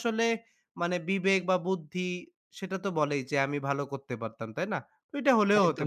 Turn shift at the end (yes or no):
yes